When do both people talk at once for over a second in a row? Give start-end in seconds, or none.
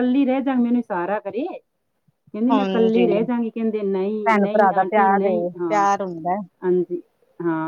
4.2-5.9